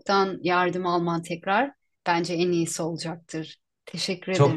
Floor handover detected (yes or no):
yes